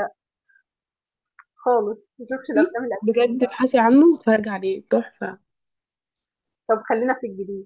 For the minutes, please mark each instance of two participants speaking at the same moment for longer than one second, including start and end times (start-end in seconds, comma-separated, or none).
2.3-3.6